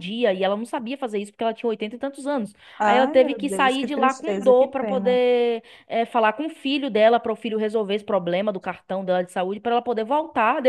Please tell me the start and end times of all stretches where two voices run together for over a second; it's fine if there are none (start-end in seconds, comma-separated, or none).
2.8-5.2